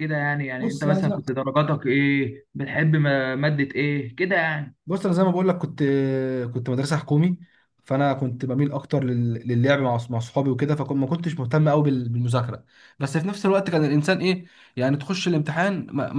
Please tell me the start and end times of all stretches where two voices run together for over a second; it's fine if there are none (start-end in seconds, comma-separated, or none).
none